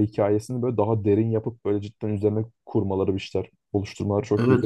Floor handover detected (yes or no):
yes